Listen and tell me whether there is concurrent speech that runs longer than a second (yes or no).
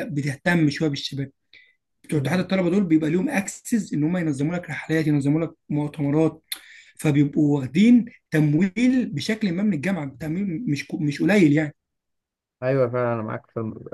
no